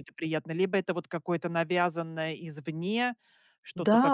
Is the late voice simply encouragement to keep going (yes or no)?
no